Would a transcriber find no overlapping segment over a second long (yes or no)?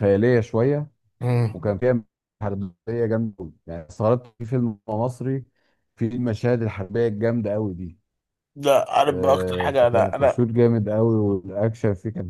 no